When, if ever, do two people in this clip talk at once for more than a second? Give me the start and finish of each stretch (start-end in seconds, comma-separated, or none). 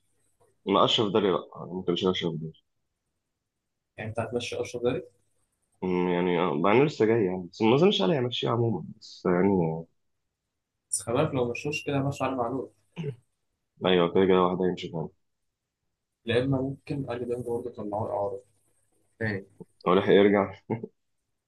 none